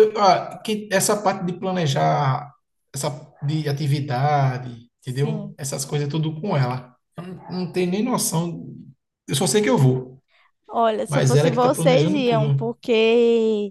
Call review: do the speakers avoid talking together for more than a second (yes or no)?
no